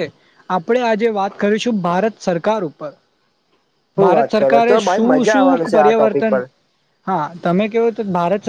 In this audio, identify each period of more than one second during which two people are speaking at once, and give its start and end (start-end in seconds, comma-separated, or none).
4.0-6.4